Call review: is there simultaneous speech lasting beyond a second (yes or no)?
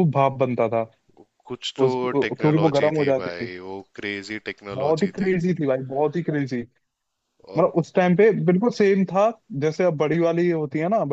yes